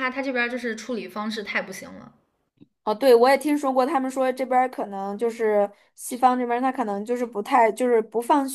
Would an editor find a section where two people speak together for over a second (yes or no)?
no